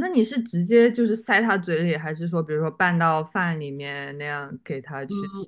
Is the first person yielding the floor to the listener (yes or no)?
yes